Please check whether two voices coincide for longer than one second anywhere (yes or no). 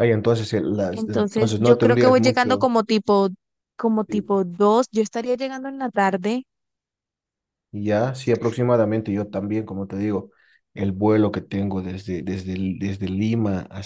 yes